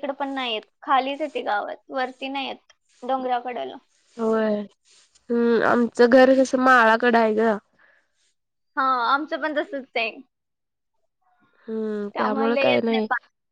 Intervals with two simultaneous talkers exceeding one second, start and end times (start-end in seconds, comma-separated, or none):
none